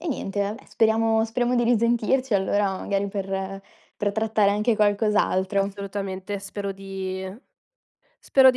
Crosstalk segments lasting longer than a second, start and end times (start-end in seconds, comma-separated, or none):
none